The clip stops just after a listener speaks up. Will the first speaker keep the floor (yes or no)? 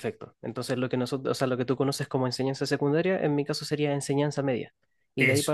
yes